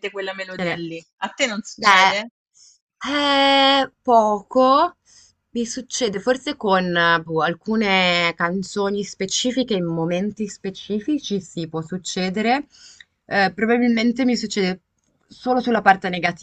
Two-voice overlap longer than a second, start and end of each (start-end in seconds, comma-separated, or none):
none